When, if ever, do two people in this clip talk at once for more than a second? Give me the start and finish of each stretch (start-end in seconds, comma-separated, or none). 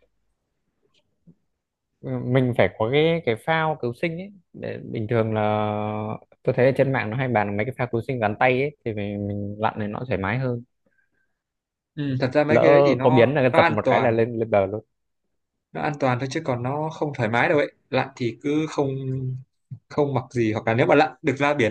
12.5-14.1